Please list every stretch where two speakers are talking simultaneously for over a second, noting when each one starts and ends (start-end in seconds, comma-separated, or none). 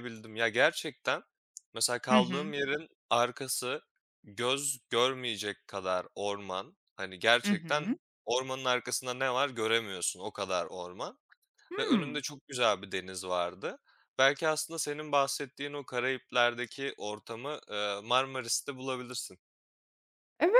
none